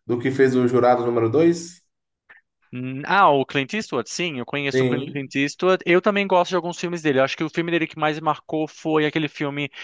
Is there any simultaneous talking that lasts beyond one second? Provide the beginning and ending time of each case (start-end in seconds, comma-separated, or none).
none